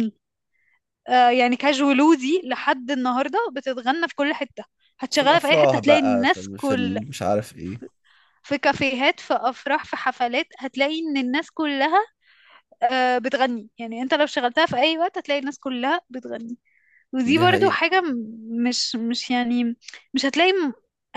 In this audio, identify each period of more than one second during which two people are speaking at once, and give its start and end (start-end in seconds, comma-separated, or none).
5.1-7.0